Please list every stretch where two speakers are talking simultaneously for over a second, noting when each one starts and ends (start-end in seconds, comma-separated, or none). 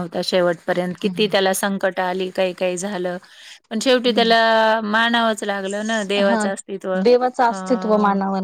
none